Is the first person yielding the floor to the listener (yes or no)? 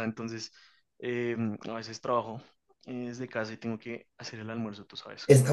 yes